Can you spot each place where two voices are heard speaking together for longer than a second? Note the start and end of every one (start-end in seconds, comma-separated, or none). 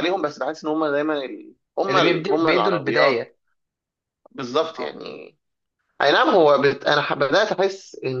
1.9-3.2